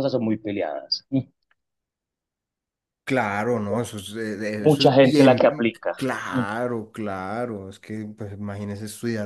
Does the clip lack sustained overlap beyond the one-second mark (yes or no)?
no